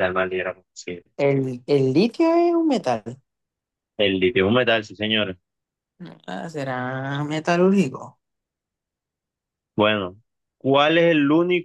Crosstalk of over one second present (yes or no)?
no